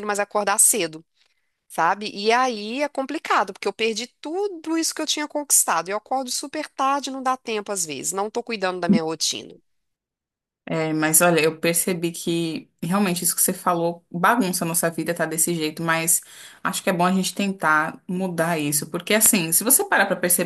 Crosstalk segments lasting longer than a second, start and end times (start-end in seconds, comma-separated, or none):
none